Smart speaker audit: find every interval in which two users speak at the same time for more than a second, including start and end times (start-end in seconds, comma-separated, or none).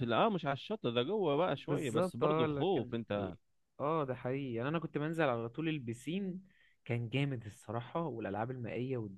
1.6-3.3